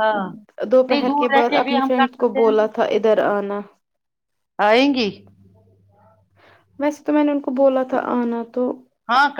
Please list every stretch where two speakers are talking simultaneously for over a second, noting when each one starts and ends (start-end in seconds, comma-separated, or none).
0.9-2.8